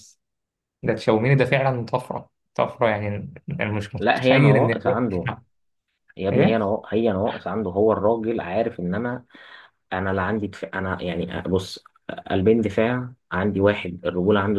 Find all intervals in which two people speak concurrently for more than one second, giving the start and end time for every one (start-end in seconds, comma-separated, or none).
4.0-5.3